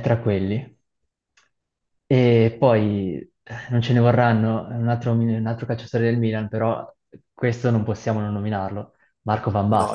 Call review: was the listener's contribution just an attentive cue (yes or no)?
no